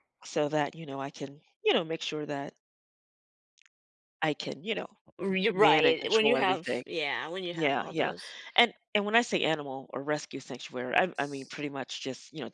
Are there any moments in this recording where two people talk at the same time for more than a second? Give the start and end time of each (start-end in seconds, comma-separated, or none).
5.5-6.8